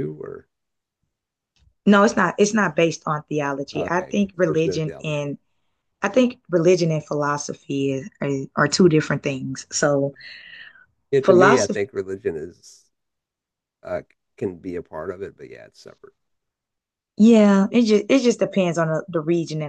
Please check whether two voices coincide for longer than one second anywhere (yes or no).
yes